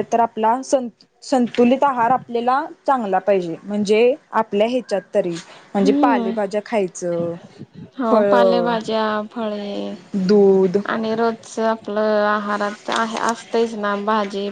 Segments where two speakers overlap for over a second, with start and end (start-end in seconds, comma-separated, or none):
none